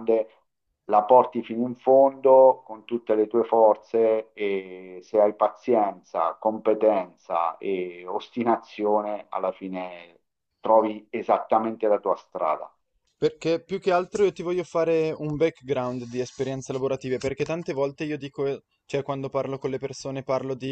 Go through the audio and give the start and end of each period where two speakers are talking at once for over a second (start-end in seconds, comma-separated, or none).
none